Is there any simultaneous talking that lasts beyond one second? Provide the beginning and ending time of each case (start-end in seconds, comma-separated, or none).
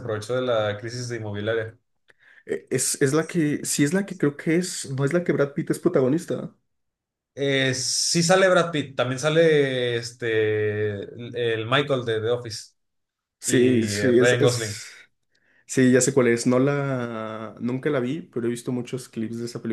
13.4-14.8